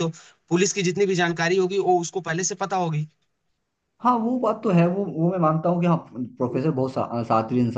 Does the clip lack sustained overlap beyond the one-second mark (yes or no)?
yes